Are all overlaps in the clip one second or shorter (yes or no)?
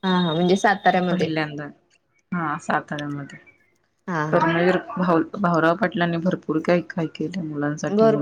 yes